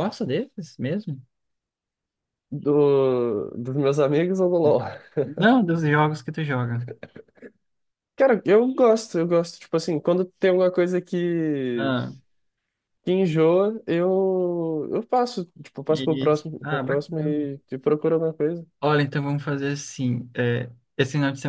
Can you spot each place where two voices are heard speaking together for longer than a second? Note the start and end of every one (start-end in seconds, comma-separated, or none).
15.9-17.4